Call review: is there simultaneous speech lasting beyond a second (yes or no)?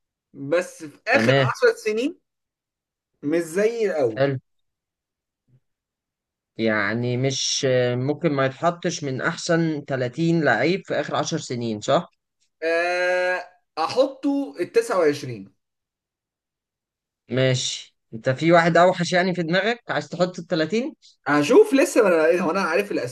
no